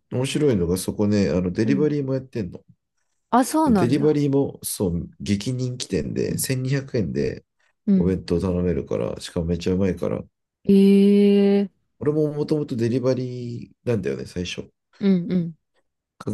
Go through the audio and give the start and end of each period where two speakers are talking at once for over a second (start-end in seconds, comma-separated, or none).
none